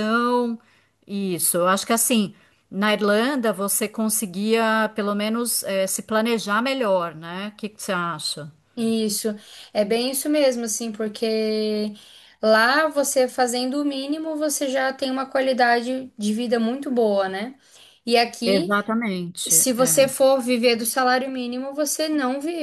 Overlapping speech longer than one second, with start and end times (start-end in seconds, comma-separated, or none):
none